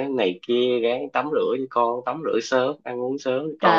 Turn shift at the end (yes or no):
yes